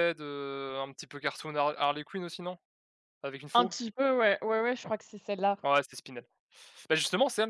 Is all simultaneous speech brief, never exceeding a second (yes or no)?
yes